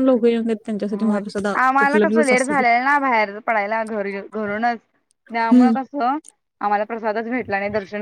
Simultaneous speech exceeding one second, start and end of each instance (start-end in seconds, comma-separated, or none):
none